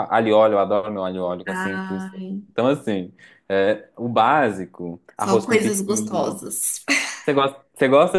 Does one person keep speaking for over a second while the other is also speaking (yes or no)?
yes